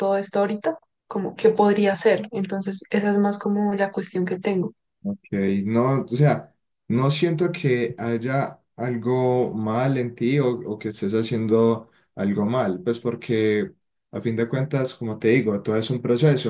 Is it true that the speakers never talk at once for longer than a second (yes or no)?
yes